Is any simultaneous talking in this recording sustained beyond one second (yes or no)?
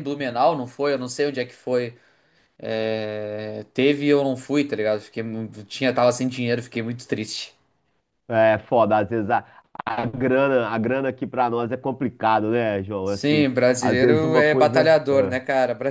yes